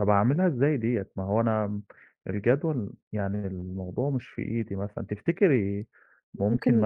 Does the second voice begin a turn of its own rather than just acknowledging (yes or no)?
yes